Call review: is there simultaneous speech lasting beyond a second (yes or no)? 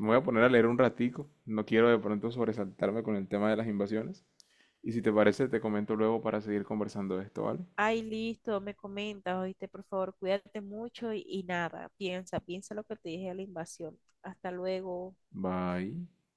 no